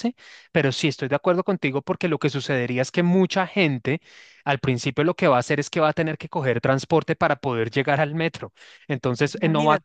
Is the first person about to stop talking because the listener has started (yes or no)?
no